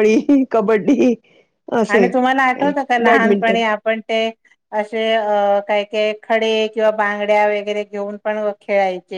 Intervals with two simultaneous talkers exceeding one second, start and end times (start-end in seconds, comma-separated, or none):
1.9-3.6